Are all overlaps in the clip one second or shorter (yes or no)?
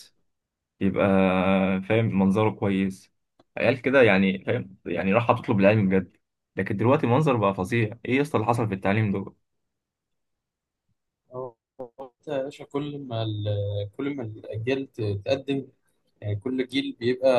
yes